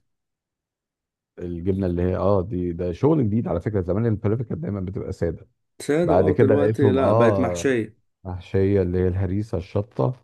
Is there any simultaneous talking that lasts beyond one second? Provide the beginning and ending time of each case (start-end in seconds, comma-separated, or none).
6.0-7.7